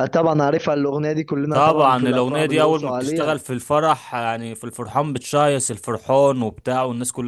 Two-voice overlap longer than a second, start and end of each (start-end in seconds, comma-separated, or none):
1.5-3.3